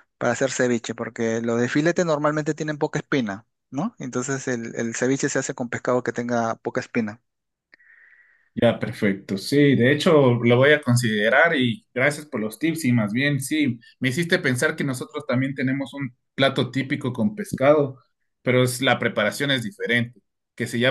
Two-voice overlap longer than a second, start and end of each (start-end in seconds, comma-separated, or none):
none